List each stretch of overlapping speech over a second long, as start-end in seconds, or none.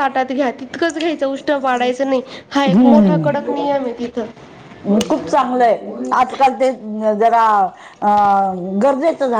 none